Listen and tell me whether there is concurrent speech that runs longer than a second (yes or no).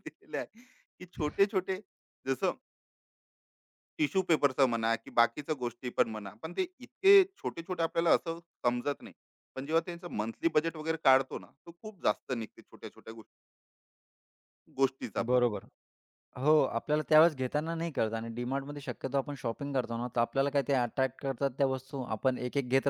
no